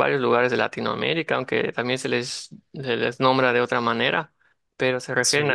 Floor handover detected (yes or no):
no